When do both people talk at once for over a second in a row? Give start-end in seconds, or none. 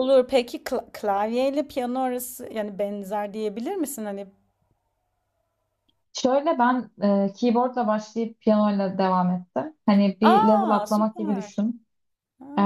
10.2-11.5